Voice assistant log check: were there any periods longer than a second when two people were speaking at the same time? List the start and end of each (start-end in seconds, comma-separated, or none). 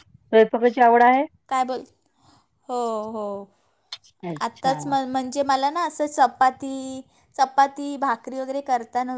none